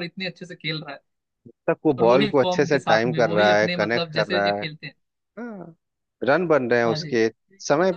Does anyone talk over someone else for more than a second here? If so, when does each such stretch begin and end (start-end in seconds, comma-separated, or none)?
2.0-4.6